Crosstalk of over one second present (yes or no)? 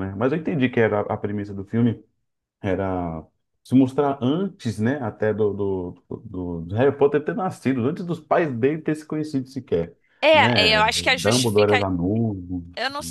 yes